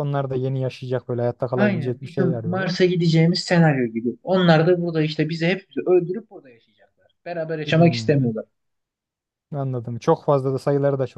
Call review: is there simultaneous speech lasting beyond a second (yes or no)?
yes